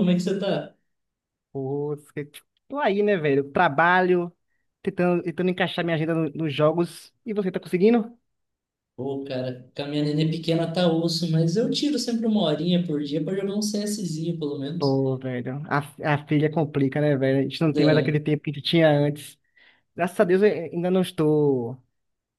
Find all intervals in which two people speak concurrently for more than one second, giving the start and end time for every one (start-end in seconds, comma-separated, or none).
none